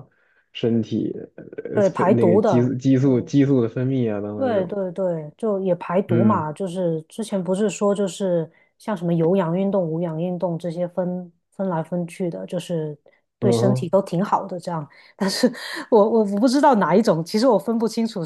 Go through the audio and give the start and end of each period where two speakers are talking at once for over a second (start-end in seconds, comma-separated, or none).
1.7-3.3